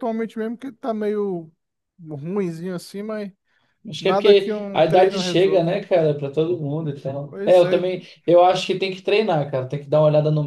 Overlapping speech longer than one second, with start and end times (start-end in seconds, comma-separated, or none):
4.0-5.8